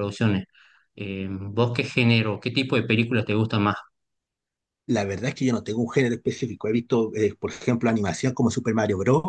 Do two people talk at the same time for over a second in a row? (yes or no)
no